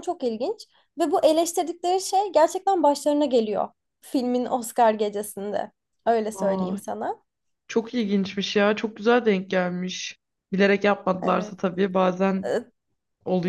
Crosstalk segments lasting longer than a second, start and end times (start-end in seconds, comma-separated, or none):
none